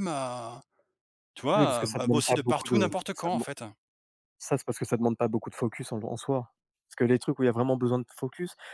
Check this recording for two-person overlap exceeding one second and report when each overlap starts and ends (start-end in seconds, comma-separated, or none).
1.6-3.5